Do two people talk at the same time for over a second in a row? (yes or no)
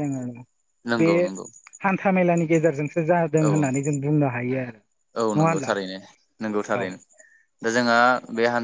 no